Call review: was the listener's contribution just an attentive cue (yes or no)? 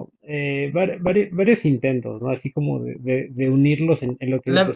no